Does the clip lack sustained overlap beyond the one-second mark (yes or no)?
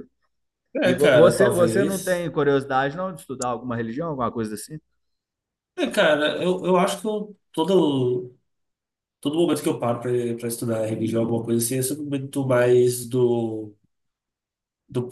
no